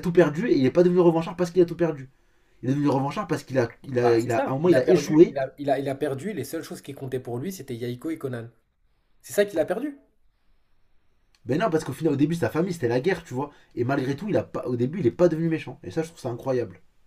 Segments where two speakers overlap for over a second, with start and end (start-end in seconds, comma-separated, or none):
4.0-5.4